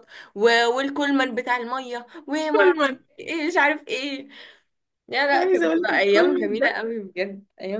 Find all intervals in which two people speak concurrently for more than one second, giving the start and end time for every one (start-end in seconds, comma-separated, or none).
5.3-6.8